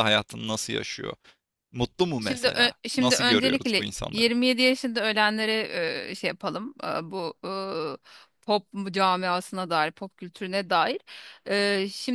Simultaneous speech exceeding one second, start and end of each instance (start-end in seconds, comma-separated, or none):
2.3-4.3